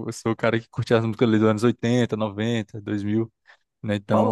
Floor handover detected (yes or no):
yes